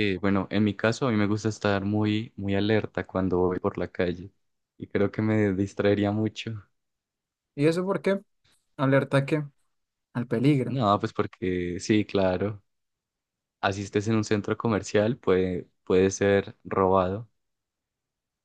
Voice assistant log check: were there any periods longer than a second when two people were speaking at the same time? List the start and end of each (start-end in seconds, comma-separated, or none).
none